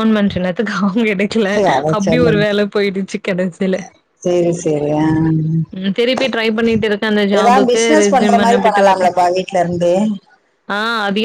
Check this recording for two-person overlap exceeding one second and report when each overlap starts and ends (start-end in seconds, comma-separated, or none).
7.4-9.1